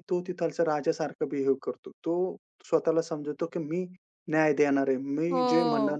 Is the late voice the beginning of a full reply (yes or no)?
no